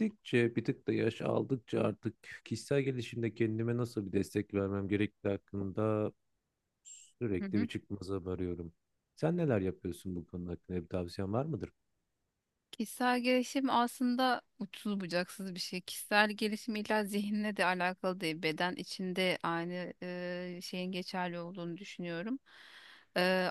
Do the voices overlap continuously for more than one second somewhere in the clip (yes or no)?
no